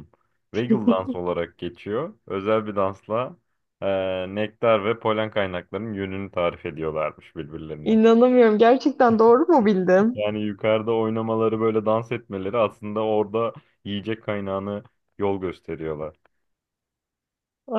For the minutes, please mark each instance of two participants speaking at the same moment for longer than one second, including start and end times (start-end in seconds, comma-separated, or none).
none